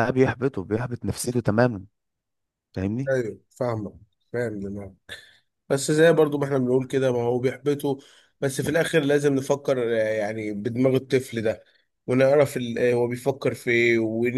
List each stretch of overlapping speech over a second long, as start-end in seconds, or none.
none